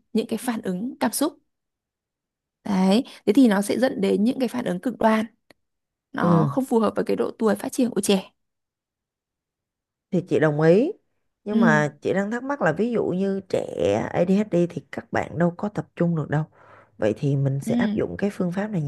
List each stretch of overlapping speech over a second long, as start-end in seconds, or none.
none